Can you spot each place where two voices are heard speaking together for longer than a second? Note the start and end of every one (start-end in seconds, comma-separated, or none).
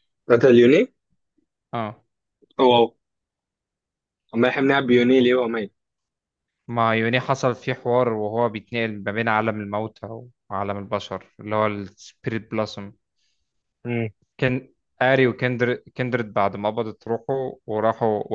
none